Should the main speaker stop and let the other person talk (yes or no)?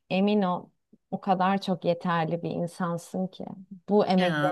no